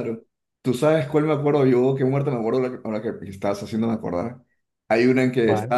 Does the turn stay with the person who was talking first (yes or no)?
yes